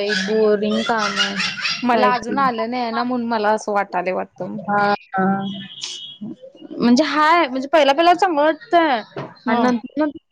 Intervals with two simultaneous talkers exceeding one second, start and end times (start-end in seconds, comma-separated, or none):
none